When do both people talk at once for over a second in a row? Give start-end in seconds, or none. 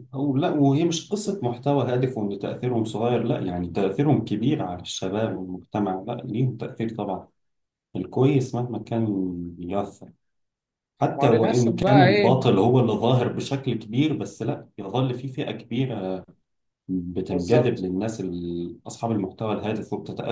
11.2-12.4